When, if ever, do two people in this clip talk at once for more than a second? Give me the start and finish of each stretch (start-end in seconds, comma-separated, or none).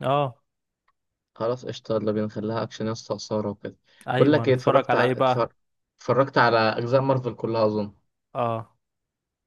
4.2-5.5